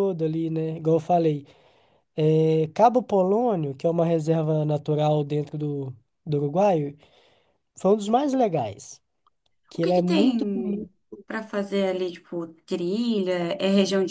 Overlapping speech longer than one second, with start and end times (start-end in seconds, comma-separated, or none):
none